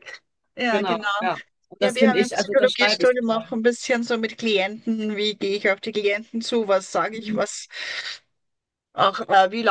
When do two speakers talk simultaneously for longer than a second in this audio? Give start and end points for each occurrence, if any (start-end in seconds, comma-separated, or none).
1.8-3.6